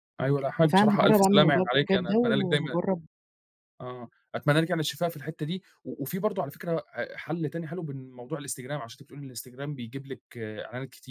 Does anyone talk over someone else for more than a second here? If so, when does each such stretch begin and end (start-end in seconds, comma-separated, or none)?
0.6-2.8